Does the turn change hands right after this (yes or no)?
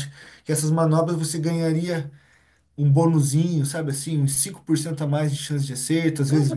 yes